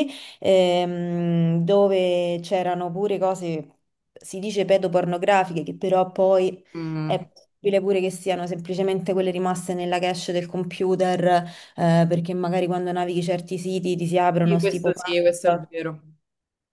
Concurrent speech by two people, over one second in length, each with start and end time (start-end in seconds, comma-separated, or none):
14.4-15.7